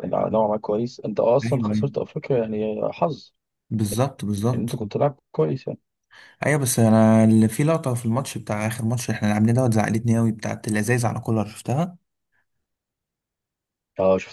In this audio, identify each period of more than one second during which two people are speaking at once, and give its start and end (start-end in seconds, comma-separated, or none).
none